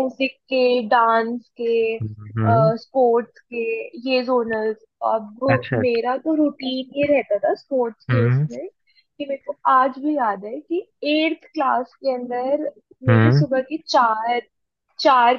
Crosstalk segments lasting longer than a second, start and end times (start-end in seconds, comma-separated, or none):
none